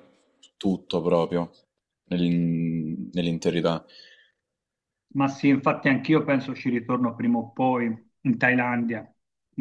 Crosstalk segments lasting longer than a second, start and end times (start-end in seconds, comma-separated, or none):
none